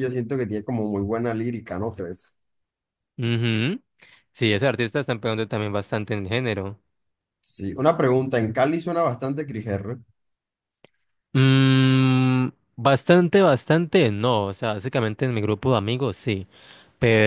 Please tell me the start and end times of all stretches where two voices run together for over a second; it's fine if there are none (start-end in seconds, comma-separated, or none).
none